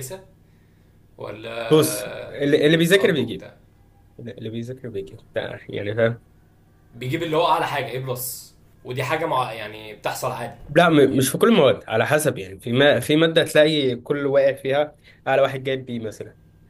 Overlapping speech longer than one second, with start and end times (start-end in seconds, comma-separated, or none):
1.7-3.5